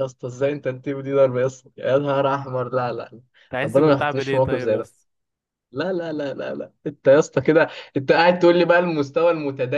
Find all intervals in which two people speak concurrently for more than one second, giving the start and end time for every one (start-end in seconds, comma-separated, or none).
3.6-4.9